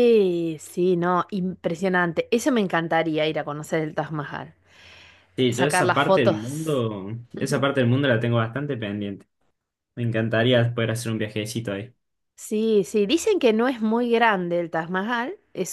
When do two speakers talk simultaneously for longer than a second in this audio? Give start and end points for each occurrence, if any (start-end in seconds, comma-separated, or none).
5.5-6.8